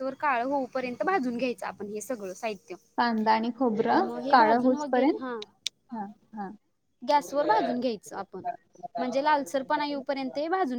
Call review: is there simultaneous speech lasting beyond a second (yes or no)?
no